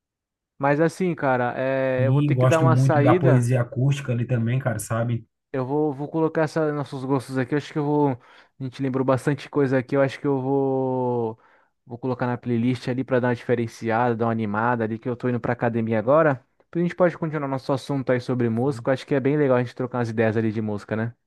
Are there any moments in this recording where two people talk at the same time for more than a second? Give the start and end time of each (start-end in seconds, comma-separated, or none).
2.0-3.5